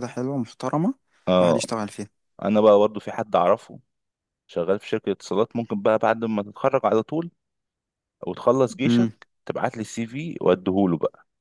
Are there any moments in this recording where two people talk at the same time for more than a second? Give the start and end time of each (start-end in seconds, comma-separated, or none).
none